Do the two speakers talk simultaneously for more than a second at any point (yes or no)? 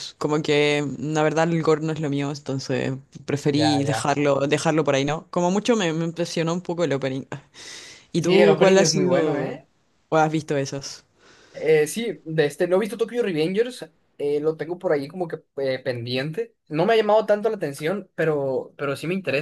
yes